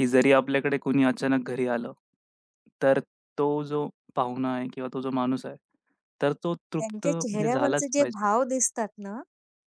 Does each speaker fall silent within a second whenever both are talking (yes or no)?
no